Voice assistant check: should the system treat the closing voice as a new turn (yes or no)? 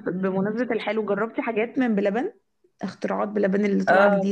yes